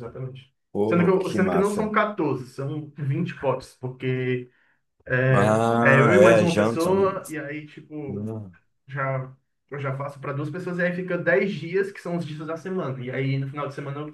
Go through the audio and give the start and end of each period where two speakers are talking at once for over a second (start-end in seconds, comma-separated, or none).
0.7-1.9, 5.3-7.0